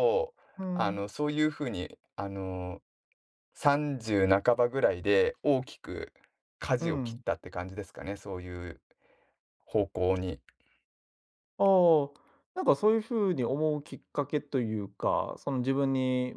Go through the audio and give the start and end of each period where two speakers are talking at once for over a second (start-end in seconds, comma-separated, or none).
none